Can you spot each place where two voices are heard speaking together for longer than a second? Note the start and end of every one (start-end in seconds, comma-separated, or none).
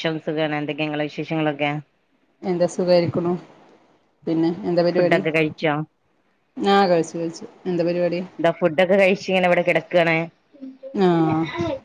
none